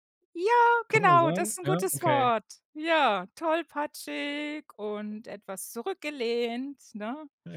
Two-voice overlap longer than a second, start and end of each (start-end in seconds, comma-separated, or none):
0.9-2.3